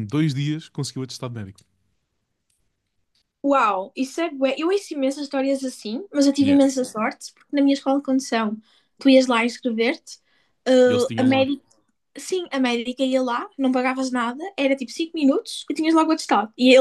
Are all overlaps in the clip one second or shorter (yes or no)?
yes